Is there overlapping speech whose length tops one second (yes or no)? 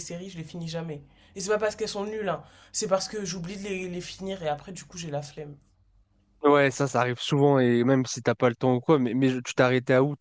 no